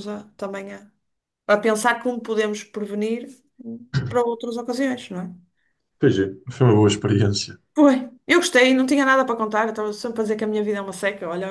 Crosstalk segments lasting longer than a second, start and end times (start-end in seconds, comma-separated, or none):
none